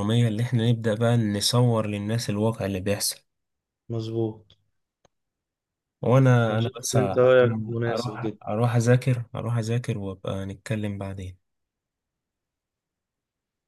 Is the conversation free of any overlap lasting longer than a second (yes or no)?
no